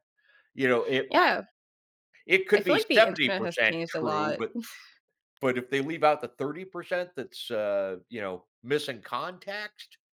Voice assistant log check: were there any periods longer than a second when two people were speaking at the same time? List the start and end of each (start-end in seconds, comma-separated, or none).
2.5-4.4